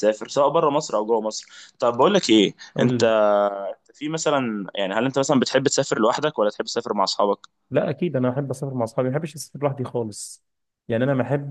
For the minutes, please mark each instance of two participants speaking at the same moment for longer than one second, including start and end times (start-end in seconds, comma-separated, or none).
none